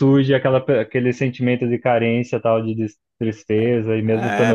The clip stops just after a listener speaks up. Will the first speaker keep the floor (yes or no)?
no